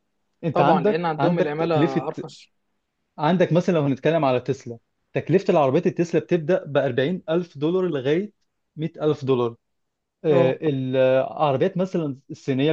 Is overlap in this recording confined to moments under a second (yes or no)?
no